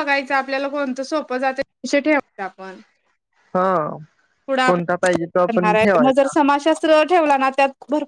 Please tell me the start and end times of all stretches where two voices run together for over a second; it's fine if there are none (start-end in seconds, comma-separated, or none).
4.7-6.3